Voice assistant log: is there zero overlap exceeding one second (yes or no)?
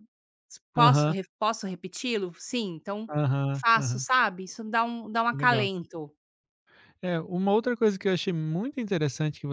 yes